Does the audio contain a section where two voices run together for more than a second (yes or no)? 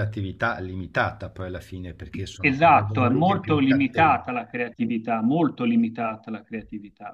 yes